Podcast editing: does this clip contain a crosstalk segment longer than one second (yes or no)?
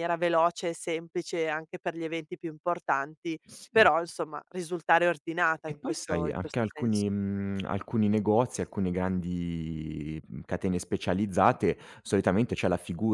yes